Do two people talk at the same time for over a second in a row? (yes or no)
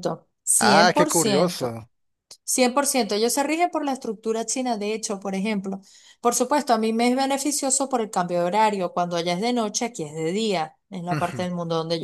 yes